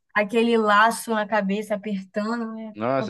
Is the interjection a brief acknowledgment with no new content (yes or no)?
no